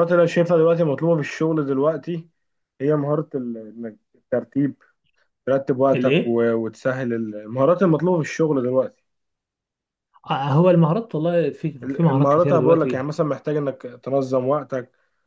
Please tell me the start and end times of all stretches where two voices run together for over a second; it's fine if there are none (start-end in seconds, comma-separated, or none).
11.8-13.1